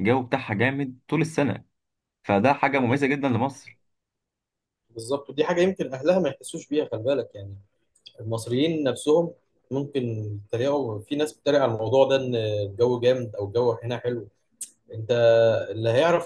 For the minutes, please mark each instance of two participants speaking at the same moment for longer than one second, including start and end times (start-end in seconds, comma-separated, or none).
none